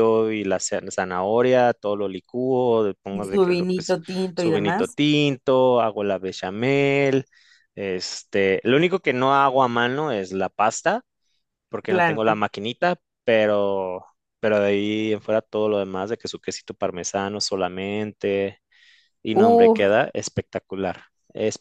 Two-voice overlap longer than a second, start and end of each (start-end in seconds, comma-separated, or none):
3.1-5.0